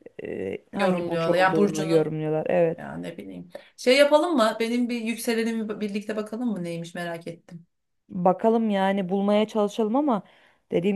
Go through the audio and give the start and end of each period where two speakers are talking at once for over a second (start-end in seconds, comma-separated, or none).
0.7-2.1